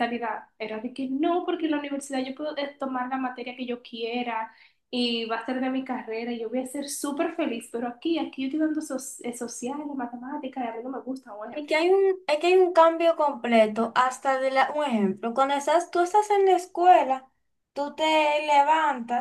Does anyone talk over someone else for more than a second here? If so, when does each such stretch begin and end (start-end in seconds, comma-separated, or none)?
none